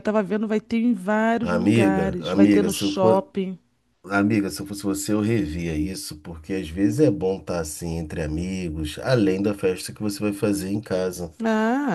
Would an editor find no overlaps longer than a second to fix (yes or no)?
no